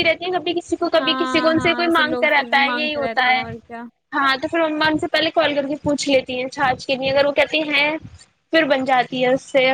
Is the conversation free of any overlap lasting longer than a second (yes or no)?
no